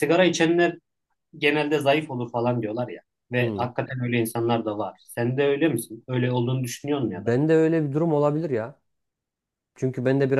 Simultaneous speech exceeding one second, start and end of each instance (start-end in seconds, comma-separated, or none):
none